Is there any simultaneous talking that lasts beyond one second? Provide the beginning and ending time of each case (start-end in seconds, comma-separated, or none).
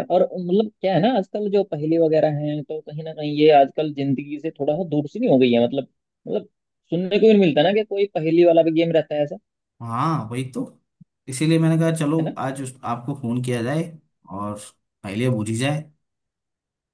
none